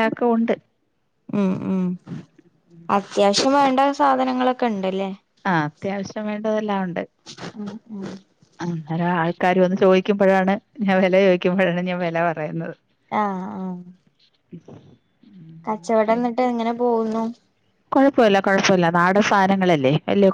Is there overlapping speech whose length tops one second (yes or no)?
no